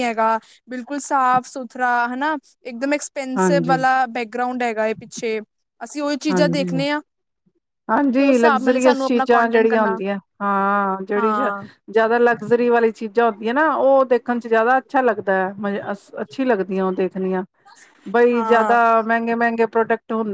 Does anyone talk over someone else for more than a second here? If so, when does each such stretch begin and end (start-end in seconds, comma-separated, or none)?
8.2-10.0